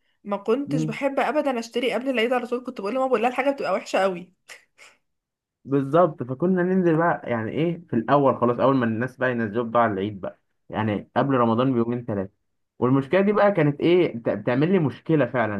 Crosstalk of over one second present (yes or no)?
no